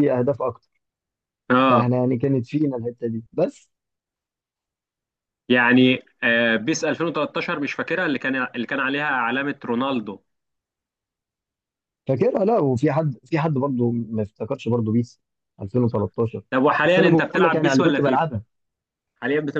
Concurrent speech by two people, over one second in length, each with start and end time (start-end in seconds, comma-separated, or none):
16.8-18.3